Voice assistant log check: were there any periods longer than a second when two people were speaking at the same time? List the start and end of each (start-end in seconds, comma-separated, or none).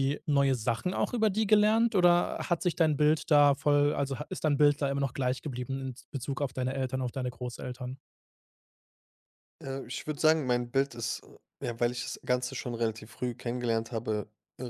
none